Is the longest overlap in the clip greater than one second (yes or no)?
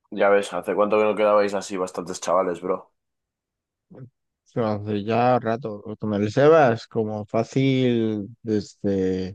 no